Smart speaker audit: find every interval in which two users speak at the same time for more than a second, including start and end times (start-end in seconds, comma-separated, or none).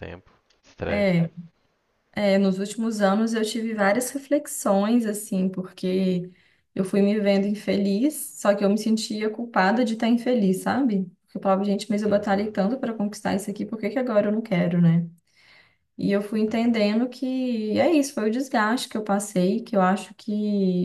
none